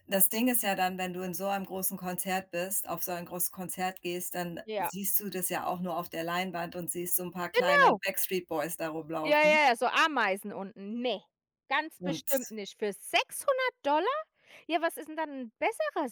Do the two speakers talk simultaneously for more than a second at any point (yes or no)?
no